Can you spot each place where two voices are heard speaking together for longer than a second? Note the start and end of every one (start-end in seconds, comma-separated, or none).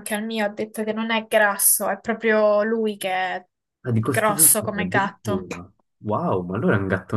4.1-5.5